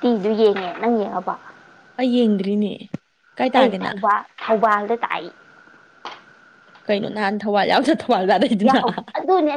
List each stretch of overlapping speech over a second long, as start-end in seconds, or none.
none